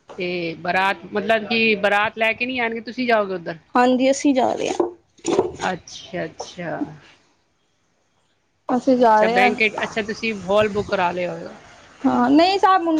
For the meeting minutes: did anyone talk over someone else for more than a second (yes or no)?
no